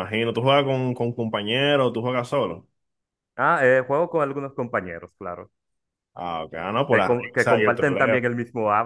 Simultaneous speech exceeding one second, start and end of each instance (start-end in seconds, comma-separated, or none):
6.9-8.2